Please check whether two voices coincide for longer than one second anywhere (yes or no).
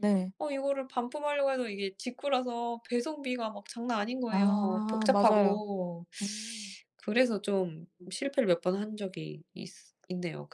yes